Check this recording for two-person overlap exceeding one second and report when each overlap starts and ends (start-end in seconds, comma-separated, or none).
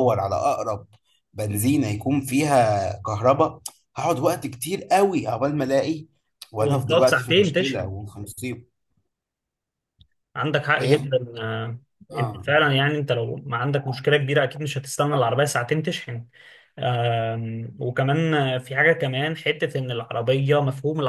6.6-7.9